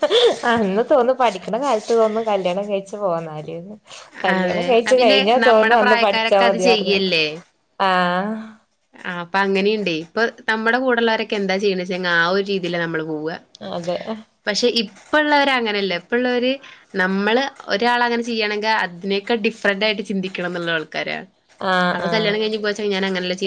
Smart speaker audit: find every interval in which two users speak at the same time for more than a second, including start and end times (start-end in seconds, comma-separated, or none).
4.4-7.0